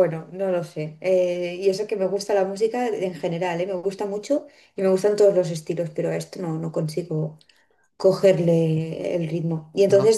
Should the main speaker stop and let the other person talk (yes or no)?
no